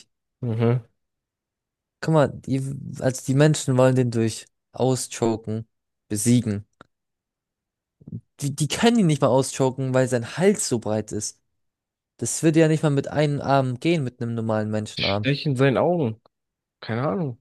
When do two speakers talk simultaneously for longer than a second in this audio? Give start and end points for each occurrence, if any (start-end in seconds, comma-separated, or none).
none